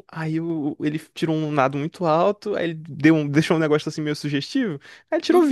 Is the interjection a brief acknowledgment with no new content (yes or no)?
yes